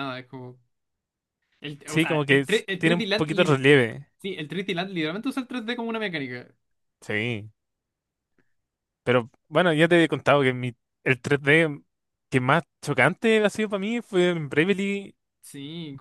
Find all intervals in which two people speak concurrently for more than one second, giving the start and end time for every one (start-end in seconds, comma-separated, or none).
1.9-3.6